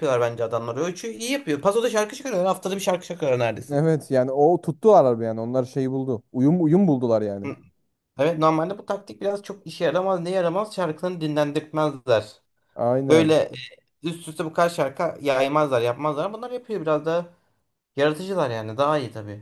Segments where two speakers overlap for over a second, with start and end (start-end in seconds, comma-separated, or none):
none